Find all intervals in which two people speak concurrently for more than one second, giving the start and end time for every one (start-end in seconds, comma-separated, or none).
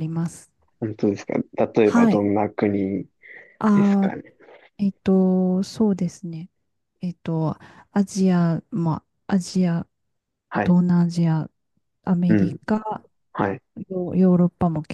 none